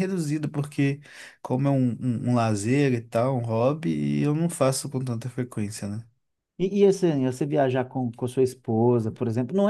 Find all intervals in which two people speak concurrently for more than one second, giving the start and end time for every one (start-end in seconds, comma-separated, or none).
none